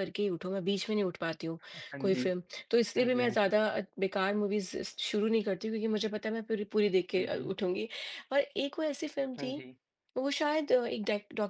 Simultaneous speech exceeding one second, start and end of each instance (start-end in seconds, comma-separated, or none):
none